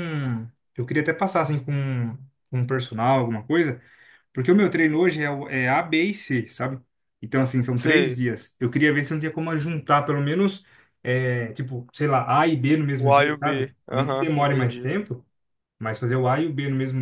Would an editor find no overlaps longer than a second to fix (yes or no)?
no